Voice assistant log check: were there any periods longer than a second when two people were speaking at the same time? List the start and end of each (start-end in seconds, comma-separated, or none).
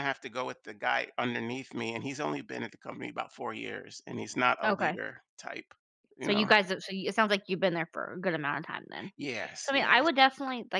none